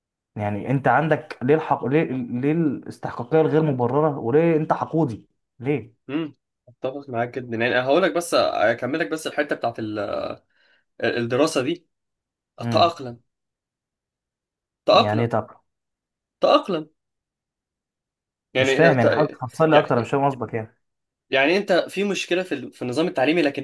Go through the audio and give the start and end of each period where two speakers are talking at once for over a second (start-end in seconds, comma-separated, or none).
none